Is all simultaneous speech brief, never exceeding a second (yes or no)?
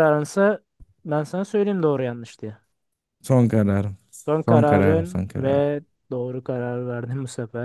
no